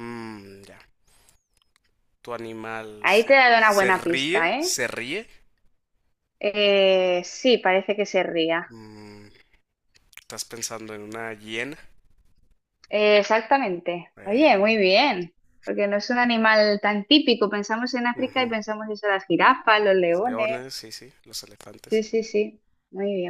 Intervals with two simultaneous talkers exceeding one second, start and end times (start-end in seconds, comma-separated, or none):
3.0-4.8